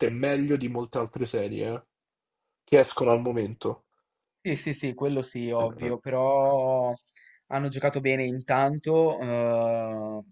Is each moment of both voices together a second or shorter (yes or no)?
yes